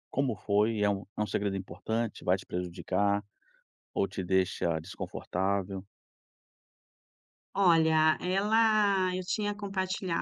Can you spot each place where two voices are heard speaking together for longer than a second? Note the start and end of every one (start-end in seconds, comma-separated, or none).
none